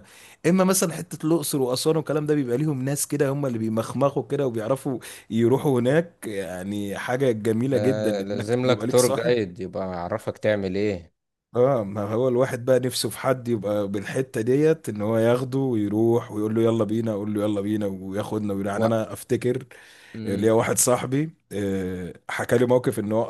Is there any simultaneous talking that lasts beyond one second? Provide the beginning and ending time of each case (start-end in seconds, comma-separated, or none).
7.7-9.3